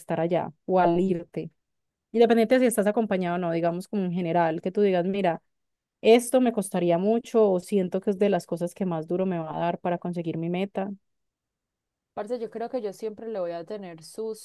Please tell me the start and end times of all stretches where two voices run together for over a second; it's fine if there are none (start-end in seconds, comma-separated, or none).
none